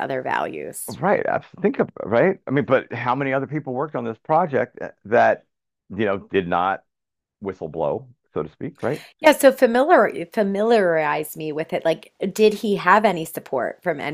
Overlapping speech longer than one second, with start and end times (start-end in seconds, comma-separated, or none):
none